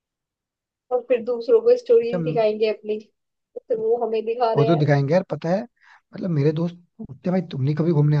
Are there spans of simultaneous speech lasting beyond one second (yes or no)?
no